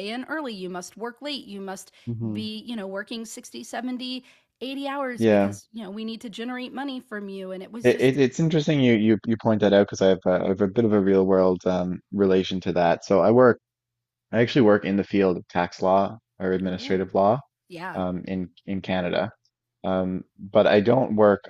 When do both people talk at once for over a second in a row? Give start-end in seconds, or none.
none